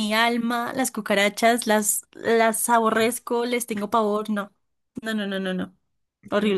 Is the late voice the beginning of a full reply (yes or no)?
yes